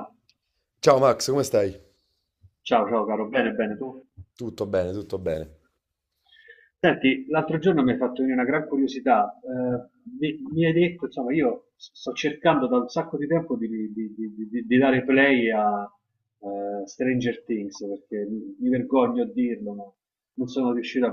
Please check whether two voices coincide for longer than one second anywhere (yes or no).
no